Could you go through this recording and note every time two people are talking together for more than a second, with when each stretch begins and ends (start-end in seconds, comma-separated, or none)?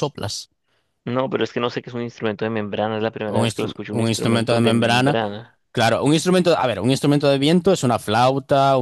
3.3-5.2